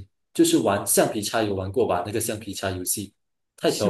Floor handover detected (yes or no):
yes